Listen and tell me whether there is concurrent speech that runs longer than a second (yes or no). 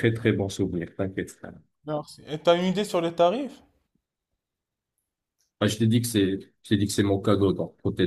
no